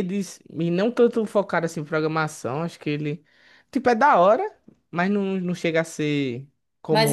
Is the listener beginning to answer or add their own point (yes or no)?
yes